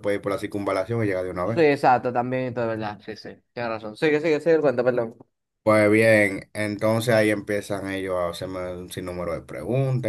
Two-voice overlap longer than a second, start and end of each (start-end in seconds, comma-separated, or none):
none